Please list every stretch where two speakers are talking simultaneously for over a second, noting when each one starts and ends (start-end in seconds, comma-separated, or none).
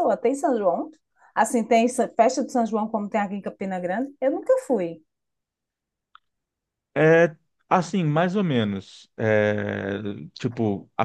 none